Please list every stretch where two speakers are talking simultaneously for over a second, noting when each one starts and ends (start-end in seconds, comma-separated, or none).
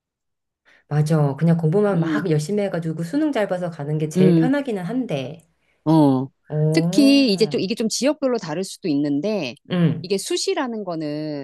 none